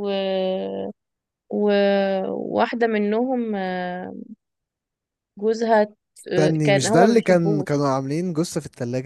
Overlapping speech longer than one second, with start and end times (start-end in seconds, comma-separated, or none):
6.3-7.8